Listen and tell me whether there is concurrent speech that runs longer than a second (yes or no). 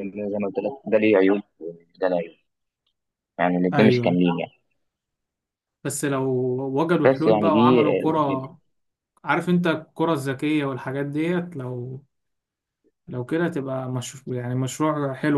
yes